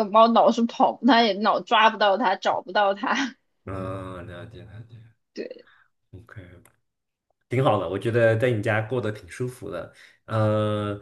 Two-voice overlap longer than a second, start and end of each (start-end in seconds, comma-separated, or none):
none